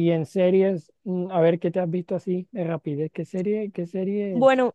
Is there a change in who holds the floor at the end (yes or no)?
yes